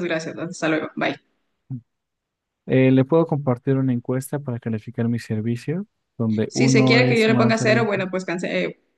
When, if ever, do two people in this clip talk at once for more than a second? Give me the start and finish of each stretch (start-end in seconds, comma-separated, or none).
6.5-8.0